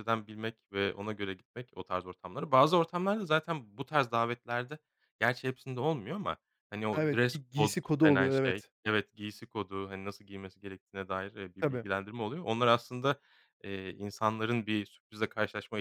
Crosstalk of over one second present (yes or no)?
yes